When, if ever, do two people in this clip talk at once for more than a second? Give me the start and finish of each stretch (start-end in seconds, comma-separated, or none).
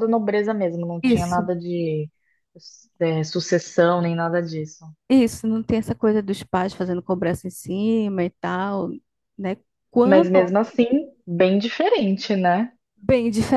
none